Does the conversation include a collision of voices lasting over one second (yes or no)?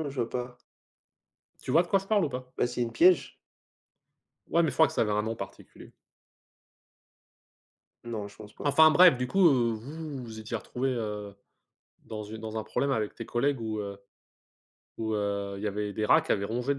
no